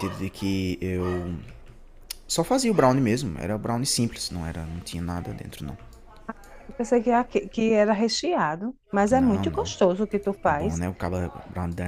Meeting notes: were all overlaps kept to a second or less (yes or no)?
yes